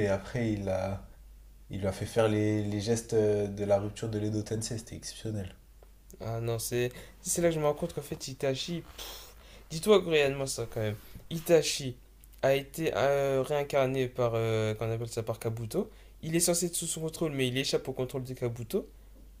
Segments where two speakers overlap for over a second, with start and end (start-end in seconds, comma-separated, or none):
none